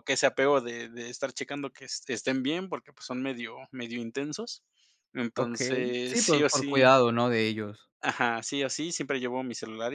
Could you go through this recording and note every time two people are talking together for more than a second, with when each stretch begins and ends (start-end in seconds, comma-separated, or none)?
5.4-6.9